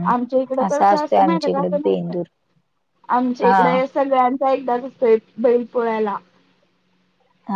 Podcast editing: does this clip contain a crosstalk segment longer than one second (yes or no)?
yes